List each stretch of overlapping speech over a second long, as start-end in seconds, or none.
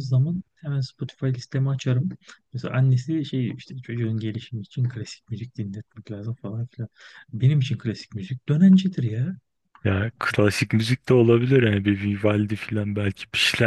none